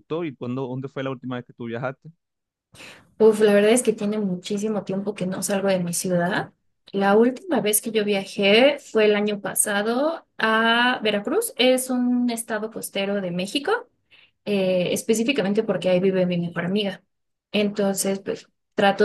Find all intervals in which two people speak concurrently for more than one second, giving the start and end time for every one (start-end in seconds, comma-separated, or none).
none